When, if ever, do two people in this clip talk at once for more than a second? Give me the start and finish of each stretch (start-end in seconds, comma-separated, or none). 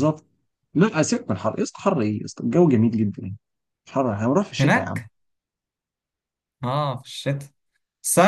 none